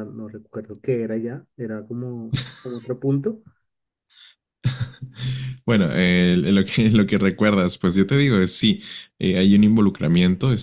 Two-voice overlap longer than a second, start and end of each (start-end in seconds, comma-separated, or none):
none